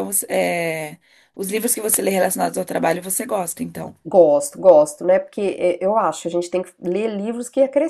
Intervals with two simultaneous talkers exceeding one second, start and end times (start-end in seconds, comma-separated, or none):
none